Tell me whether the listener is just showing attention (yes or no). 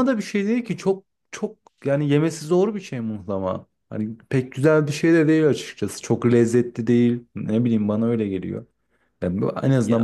yes